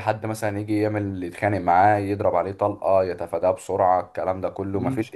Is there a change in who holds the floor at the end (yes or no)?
no